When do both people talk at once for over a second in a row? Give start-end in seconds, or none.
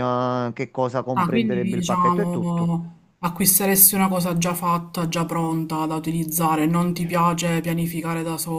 1.1-2.7